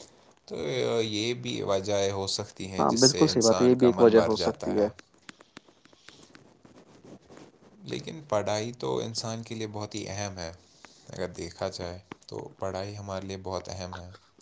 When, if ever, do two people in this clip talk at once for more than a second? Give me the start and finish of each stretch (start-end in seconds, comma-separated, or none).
2.8-4.8